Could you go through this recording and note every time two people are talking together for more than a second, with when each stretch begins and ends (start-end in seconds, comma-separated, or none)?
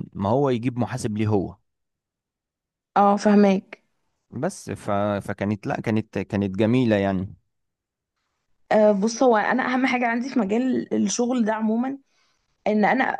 none